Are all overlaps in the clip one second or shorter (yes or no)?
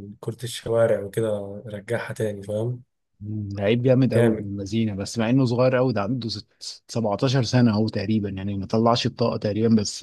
yes